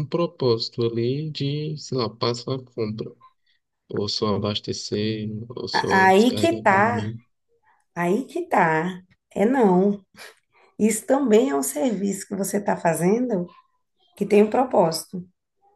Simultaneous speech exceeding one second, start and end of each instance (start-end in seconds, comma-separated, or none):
5.7-7.1